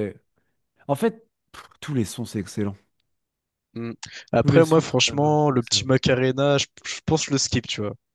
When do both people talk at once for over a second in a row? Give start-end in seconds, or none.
4.4-5.9